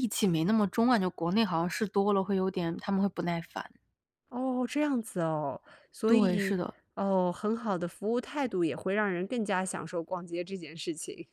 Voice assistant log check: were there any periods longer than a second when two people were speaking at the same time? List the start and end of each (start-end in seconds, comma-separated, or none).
none